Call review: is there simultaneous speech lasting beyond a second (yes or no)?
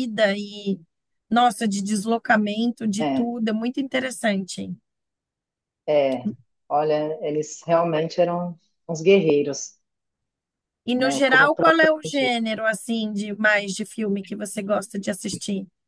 yes